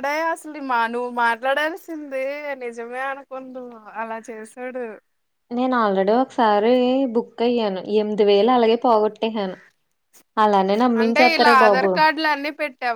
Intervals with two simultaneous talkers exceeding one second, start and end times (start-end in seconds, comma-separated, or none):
none